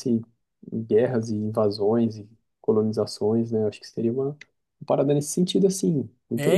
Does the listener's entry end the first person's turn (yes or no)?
yes